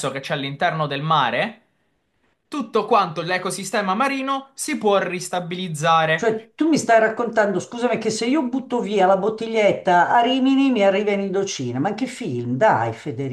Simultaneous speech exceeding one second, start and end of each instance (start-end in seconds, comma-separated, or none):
none